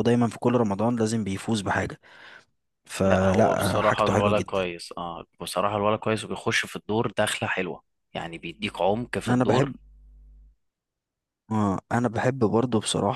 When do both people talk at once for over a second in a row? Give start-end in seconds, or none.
3.0-4.6